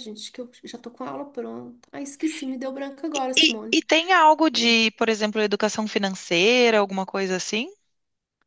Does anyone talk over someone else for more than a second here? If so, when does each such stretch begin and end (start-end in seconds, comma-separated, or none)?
none